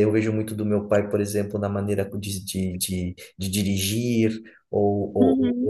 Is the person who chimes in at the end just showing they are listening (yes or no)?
yes